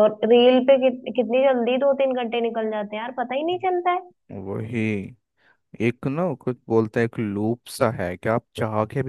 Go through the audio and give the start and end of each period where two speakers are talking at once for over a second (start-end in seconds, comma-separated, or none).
none